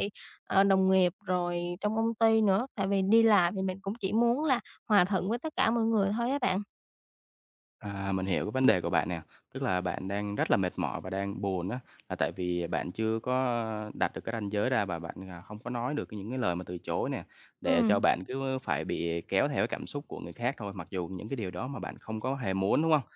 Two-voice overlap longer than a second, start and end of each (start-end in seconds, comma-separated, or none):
none